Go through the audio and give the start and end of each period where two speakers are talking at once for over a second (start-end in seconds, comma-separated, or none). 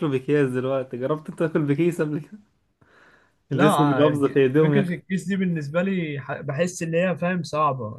3.5-5.0